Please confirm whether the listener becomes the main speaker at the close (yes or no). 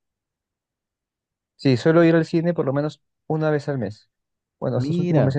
no